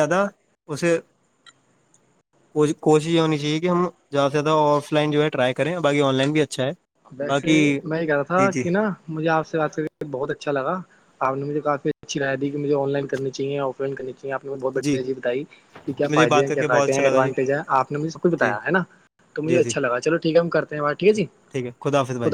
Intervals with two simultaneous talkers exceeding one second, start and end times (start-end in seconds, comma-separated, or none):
16.0-17.3